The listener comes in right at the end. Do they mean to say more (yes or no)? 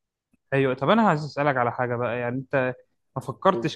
no